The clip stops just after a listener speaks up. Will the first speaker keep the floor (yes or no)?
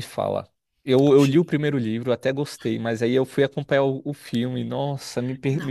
yes